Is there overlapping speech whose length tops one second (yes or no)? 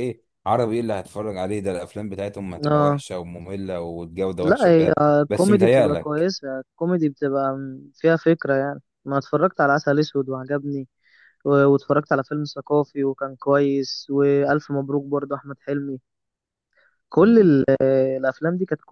yes